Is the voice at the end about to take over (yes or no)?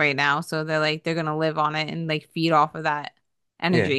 yes